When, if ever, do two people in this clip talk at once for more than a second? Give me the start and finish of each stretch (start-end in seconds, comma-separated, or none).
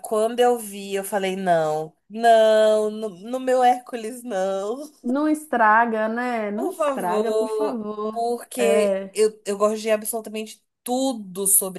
6.5-9.2